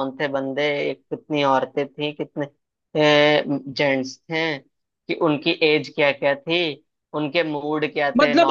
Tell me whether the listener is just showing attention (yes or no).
no